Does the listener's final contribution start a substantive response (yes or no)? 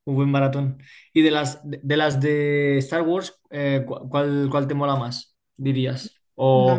yes